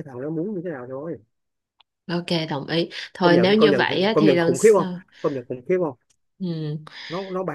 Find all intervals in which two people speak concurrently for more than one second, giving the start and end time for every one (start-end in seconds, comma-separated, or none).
3.2-5.0